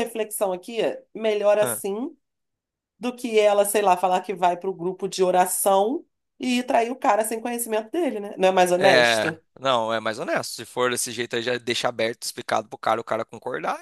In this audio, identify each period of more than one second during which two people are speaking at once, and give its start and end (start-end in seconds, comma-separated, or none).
none